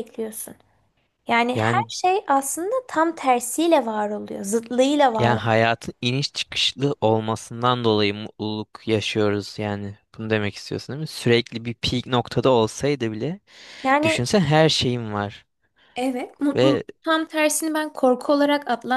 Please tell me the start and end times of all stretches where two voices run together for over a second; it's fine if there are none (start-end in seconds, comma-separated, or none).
none